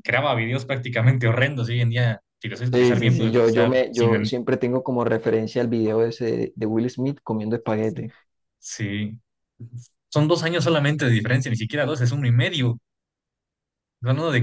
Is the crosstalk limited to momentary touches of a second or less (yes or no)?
no